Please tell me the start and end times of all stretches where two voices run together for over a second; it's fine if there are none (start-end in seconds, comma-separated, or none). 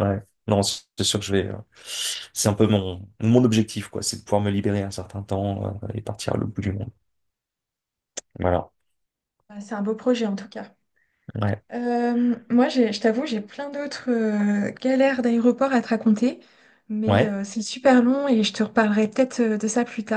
none